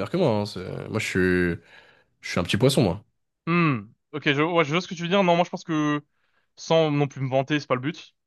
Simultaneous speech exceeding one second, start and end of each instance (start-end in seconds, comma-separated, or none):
none